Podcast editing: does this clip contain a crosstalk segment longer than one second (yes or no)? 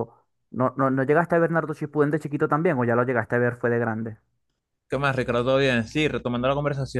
no